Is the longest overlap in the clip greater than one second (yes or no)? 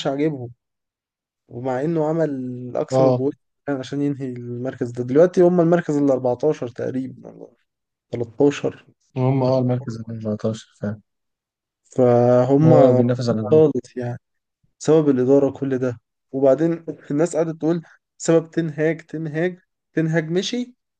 no